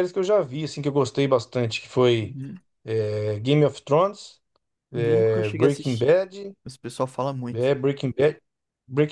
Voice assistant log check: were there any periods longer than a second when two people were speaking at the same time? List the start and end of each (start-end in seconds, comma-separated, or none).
4.9-6.1